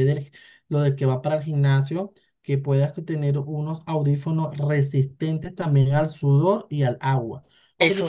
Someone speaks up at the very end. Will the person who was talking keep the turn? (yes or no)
yes